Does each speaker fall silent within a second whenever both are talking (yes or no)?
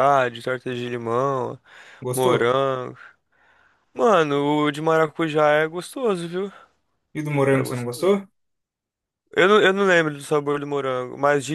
yes